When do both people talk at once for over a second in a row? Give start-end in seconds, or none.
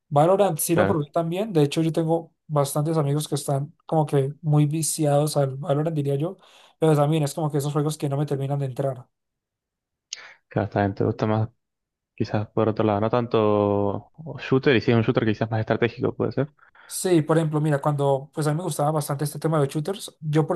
none